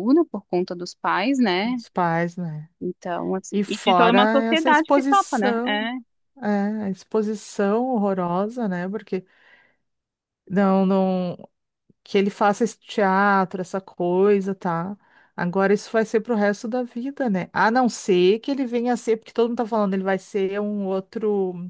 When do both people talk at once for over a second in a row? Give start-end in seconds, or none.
3.5-5.9